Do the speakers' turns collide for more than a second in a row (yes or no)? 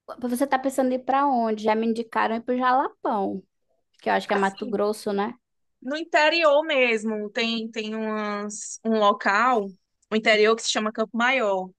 no